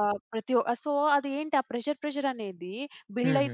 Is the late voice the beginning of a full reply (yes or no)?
no